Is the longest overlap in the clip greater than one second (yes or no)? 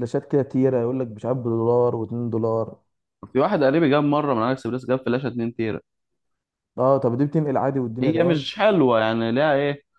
no